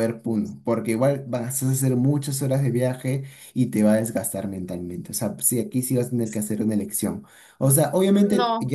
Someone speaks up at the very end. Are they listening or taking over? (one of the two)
listening